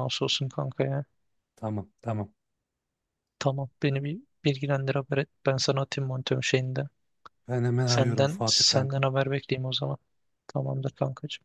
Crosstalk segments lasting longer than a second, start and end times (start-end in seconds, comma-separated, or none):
7.8-9.1